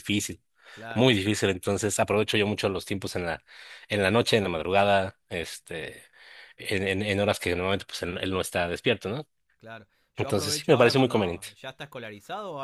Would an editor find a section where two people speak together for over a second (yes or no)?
yes